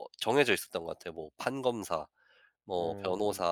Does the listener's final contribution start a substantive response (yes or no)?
no